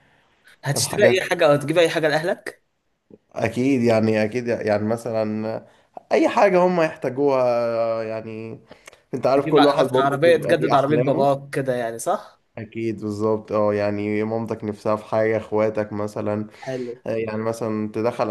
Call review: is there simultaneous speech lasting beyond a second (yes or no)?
yes